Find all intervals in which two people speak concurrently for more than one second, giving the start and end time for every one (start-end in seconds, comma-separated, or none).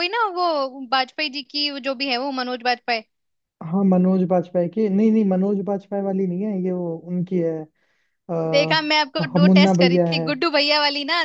8.5-10.3